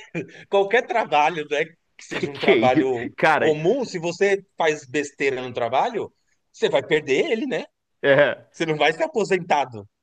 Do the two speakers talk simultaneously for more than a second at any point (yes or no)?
yes